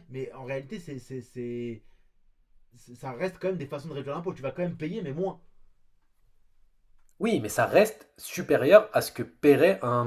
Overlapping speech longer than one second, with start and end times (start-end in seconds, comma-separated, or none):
none